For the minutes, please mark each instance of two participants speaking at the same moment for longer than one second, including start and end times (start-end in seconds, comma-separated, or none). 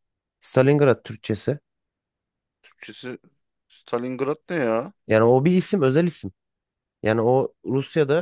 none